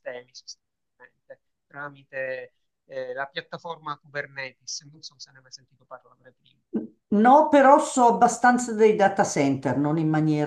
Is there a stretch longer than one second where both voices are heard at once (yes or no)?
no